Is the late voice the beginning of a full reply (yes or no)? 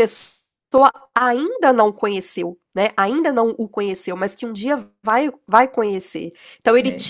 no